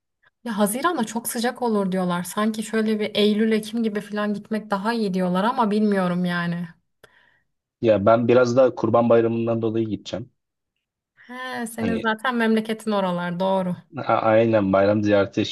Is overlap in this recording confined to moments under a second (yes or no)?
yes